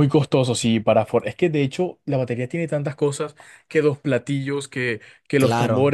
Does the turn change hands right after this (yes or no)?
no